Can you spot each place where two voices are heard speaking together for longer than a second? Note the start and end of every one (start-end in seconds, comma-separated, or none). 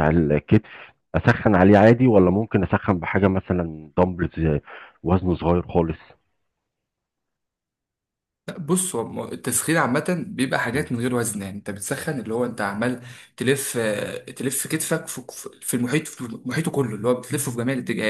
none